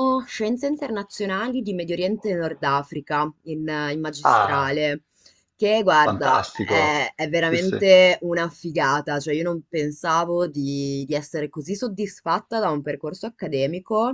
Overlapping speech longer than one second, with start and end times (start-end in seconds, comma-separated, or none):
6.0-7.8